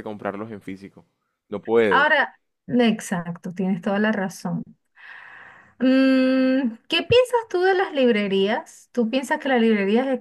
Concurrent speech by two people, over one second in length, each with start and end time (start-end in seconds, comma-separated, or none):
none